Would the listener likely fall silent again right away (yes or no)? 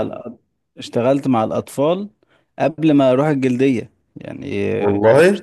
yes